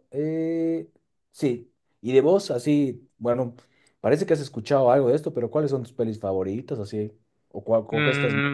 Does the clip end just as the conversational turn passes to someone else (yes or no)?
yes